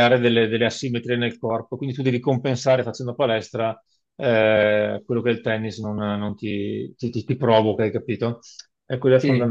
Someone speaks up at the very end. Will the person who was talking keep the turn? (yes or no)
yes